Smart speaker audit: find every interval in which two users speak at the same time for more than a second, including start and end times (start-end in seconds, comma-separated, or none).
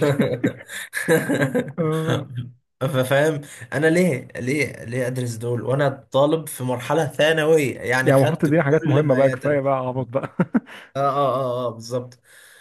8.0-9.6